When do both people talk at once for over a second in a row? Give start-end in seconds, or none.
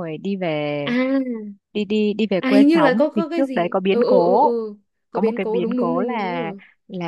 2.4-4.5, 5.1-6.4